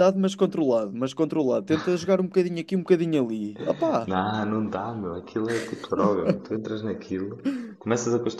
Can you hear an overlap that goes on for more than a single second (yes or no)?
no